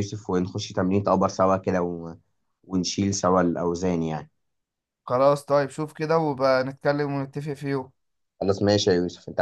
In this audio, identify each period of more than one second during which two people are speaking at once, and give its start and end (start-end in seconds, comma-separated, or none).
none